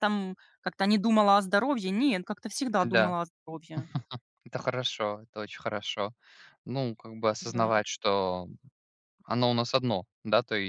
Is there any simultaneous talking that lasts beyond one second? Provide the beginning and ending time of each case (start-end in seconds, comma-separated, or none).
none